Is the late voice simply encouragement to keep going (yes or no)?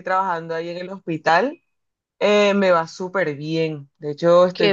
yes